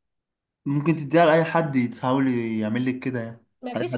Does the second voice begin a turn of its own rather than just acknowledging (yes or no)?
yes